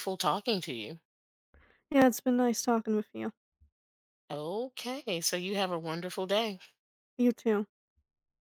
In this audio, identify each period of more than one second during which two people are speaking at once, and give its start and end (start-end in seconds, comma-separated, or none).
none